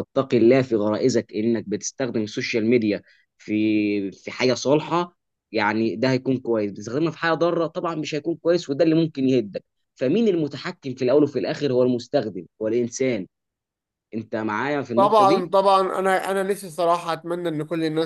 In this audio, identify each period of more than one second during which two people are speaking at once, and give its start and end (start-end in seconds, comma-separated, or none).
none